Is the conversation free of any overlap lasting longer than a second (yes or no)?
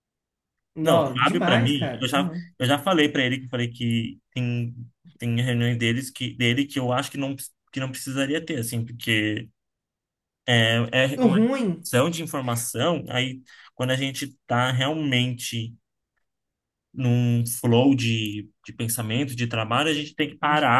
no